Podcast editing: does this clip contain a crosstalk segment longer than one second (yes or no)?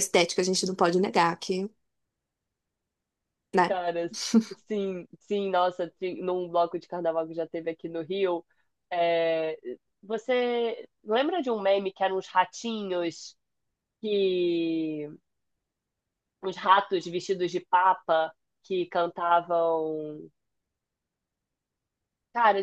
no